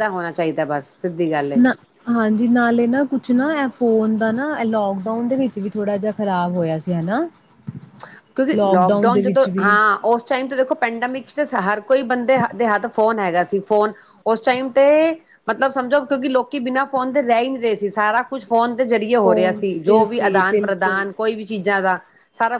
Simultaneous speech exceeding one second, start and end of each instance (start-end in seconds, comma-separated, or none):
19.2-21.0